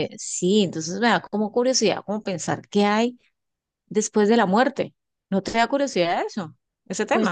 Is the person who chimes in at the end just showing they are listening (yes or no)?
no